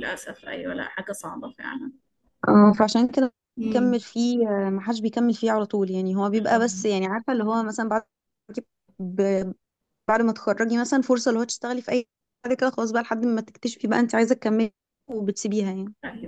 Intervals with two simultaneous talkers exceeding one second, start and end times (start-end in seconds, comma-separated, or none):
none